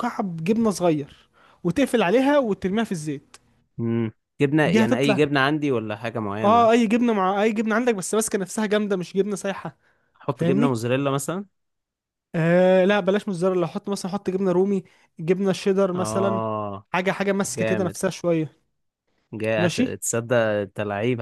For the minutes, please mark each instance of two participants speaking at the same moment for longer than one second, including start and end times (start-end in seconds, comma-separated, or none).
none